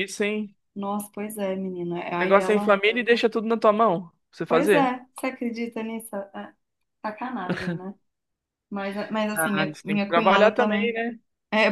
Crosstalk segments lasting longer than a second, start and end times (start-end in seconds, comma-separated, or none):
9.3-11.0